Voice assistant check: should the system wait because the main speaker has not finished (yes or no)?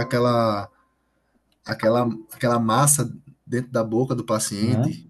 no